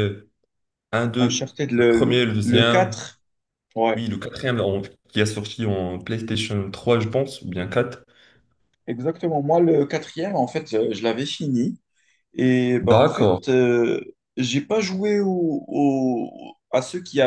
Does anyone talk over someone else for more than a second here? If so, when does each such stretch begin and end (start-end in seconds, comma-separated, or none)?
1.2-3.0